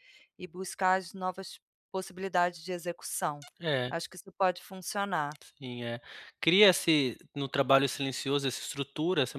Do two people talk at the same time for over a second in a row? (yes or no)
no